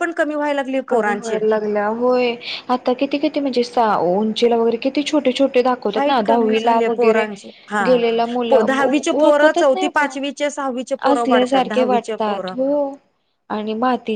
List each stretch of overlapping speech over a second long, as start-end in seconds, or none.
5.9-7.2, 8.7-10.2, 11.1-12.5